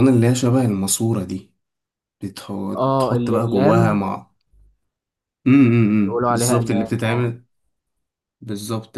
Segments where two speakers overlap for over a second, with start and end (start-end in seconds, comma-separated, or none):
2.8-4.0, 6.0-7.3